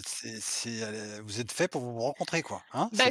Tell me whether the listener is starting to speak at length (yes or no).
yes